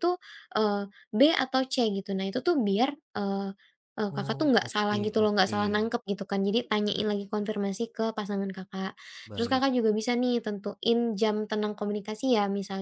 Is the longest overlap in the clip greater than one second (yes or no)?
yes